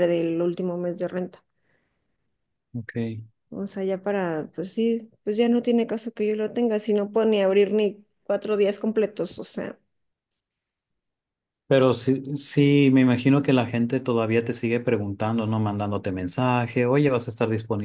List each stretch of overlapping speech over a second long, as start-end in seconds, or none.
none